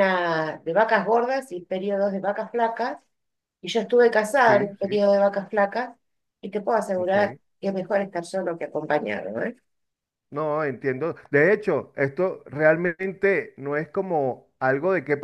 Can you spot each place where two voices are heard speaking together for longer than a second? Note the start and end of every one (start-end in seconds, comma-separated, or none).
none